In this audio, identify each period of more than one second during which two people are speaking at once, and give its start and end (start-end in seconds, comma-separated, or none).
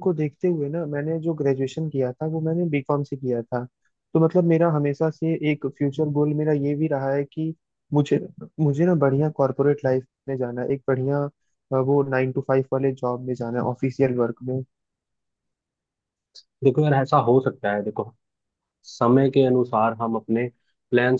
none